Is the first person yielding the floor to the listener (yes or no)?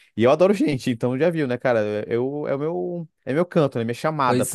yes